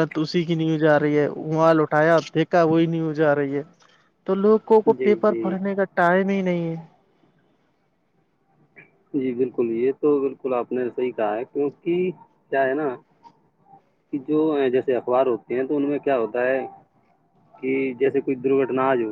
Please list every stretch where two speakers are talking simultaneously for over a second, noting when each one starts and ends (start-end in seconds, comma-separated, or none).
none